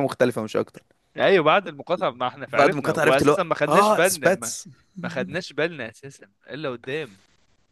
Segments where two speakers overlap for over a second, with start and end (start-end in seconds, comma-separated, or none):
2.5-4.5